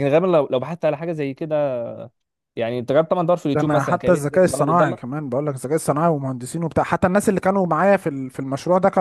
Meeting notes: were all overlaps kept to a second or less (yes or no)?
no